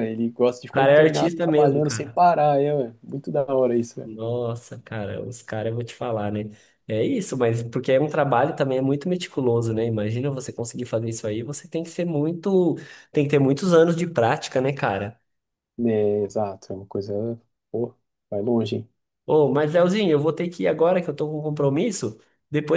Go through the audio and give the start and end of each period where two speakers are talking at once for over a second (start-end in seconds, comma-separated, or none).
0.7-2.2